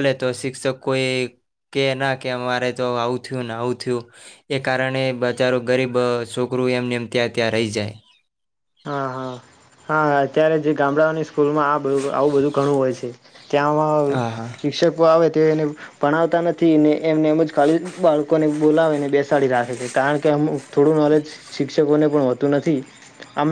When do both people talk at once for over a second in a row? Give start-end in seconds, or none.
none